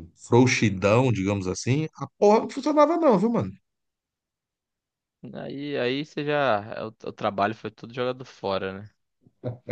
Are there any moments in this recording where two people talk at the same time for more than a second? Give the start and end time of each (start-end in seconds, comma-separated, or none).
none